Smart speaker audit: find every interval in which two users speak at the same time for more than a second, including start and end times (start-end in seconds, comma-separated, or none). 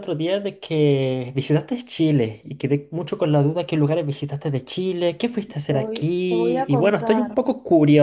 5.3-7.4